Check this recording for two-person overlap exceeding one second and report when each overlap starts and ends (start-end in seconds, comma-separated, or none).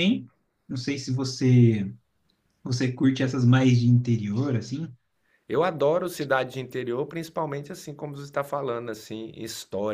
none